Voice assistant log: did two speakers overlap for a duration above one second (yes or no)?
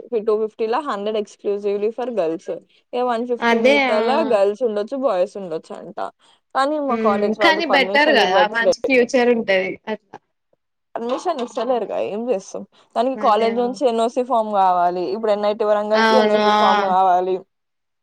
yes